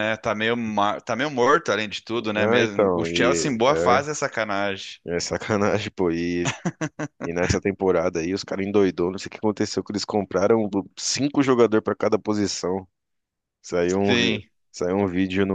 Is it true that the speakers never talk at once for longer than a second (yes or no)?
no